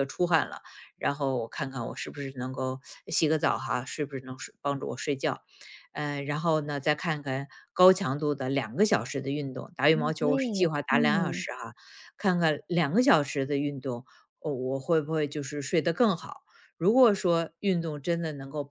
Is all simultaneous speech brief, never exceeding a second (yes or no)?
no